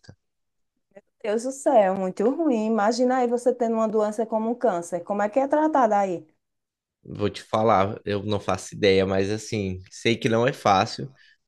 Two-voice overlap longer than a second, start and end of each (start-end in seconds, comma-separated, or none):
none